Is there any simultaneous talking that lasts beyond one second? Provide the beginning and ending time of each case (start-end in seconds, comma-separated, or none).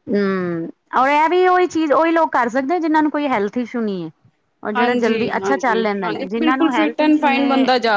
4.8-7.5